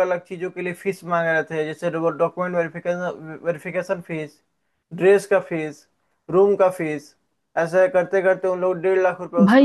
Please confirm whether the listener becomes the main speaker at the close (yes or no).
yes